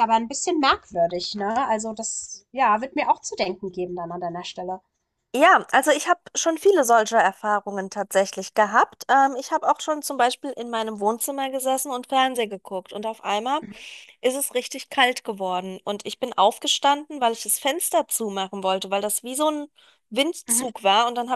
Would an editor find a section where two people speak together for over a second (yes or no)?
no